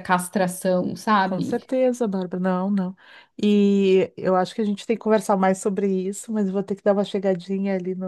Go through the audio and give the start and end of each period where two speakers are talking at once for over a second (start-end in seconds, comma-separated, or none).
none